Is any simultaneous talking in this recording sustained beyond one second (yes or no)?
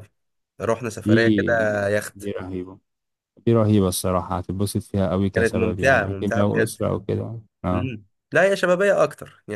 yes